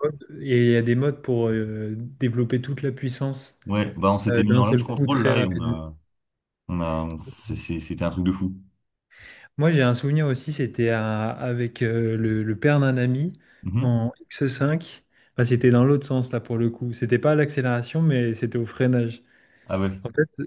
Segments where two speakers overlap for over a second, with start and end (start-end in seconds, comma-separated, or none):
4.3-5.8